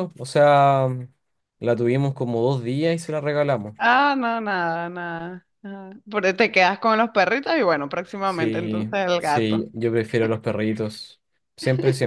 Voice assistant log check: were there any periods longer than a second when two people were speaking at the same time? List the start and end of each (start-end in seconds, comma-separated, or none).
8.2-9.7